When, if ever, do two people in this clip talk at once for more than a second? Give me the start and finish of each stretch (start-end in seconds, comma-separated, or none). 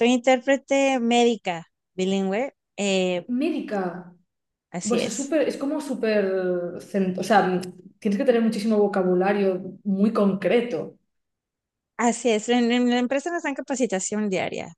none